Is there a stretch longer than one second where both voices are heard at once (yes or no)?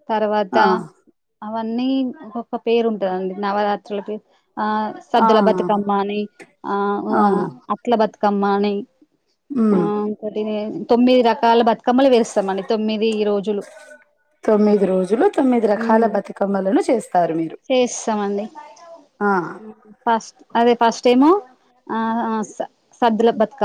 no